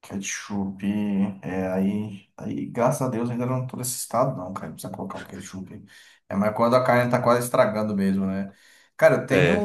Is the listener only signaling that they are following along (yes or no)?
yes